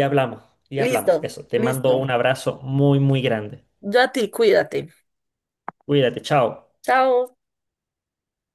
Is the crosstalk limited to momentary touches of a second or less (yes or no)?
no